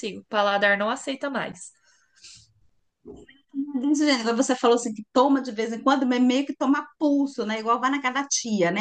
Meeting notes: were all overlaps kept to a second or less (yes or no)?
yes